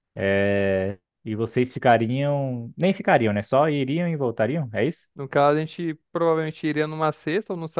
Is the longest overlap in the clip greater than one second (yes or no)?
no